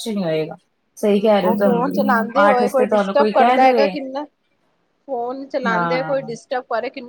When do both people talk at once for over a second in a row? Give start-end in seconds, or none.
1.1-3.9